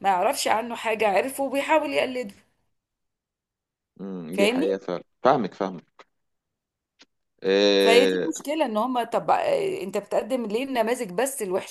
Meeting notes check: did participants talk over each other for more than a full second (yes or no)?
no